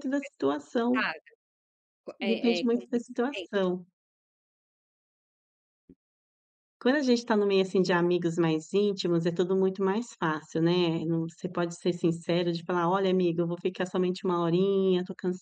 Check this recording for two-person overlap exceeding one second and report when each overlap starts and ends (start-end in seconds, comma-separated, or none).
2.2-3.7